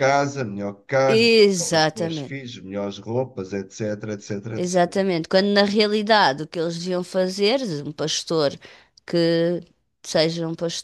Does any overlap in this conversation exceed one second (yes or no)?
yes